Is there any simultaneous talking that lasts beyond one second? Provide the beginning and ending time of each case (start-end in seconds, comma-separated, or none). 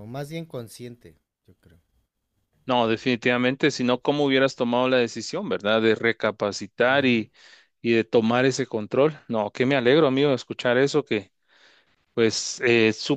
none